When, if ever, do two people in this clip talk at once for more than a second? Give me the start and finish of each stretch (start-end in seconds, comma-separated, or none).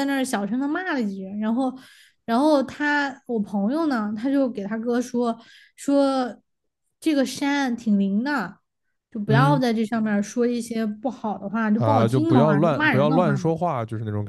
11.8-13.5